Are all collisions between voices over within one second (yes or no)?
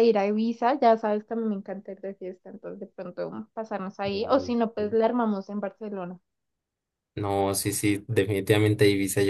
yes